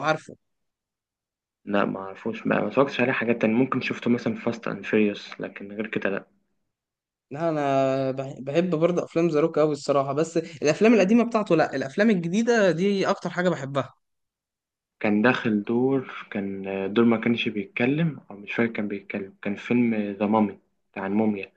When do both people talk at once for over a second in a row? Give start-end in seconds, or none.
none